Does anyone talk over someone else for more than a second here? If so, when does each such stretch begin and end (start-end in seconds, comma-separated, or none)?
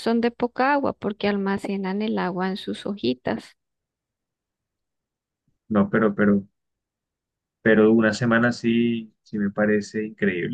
none